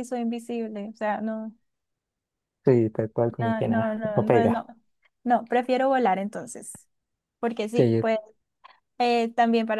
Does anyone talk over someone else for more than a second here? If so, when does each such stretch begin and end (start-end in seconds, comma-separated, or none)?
3.4-4.7